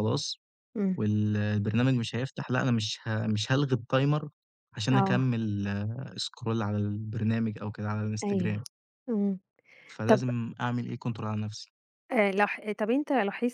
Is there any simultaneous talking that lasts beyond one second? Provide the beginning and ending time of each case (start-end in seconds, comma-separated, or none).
none